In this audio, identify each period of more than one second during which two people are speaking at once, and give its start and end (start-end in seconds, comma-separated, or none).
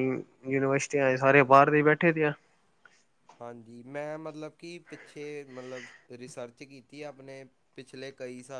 none